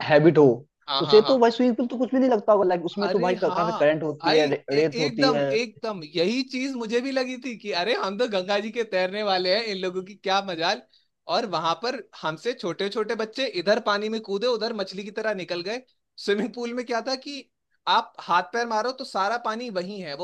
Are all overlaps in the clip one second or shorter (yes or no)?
no